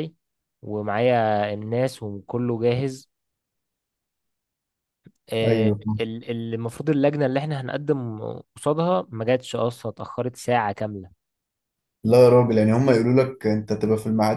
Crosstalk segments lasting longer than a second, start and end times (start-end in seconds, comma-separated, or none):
none